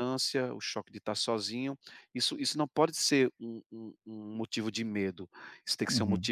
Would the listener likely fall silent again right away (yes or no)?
yes